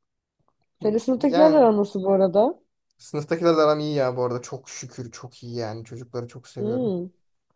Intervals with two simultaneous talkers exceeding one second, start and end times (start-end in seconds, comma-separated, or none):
none